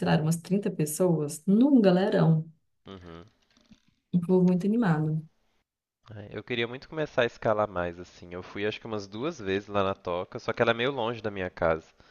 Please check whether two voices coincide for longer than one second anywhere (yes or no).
no